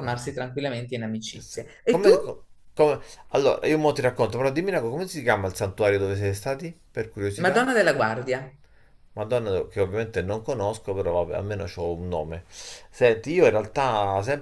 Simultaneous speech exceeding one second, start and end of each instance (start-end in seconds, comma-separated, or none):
none